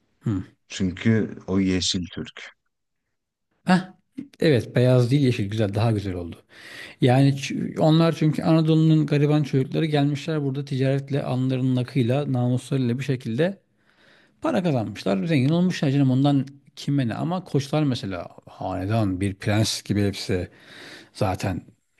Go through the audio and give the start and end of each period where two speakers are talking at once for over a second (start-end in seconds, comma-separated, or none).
none